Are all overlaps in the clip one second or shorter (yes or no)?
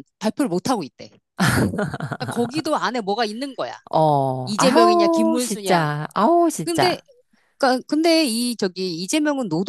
no